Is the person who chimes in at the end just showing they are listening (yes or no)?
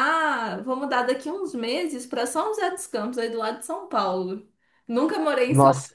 yes